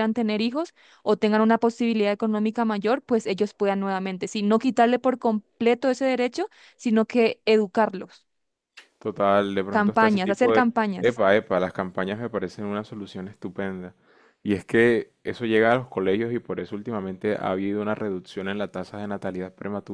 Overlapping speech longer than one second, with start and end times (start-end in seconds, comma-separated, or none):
9.7-11.2